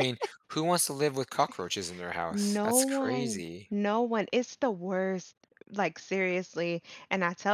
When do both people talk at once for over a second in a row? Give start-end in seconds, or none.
2.3-3.7